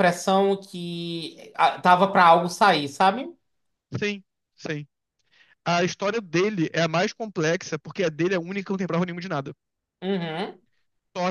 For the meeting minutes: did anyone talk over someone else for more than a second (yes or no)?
no